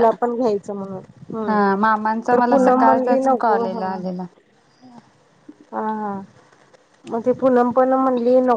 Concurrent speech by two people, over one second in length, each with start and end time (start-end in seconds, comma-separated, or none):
2.3-3.8